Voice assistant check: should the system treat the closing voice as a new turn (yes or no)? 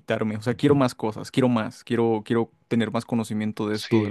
no